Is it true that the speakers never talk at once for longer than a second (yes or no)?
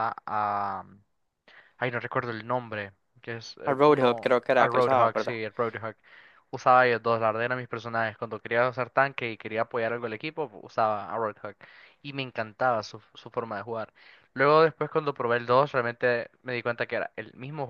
no